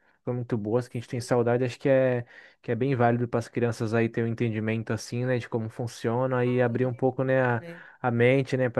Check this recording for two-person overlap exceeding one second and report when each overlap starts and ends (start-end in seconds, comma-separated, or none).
6.4-7.6